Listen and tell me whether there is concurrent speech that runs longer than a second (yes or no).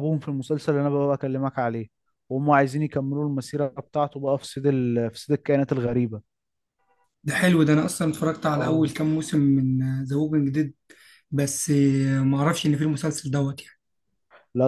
no